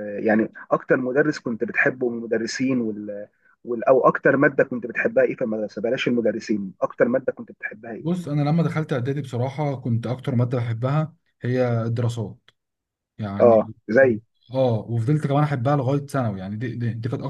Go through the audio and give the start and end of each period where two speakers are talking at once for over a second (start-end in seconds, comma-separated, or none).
none